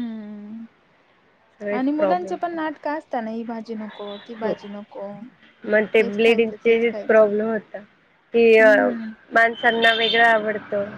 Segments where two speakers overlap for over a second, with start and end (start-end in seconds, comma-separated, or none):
none